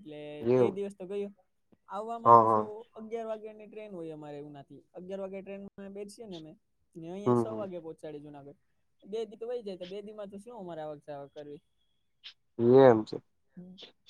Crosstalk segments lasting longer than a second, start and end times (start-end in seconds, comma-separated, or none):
none